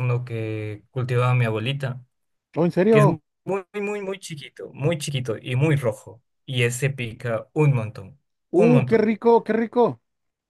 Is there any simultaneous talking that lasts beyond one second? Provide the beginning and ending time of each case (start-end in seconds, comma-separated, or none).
none